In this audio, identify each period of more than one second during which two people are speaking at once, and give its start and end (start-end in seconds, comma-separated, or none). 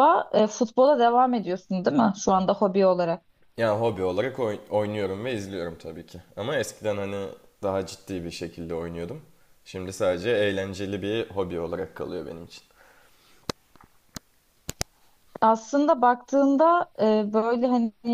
none